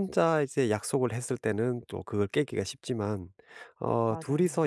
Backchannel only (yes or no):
yes